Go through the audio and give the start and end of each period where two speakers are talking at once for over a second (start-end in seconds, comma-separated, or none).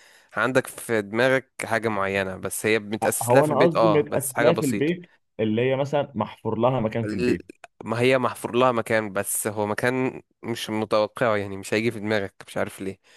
3.2-4.9